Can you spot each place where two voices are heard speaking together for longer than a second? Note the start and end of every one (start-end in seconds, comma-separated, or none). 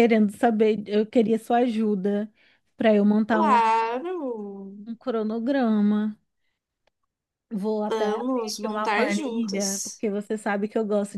7.9-10.0